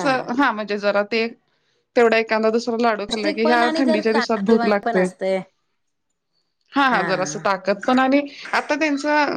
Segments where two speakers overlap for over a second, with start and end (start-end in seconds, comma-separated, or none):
3.1-5.0